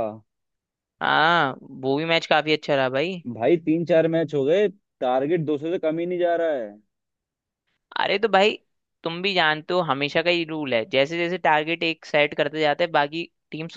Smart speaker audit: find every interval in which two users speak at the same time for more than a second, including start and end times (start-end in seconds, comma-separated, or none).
none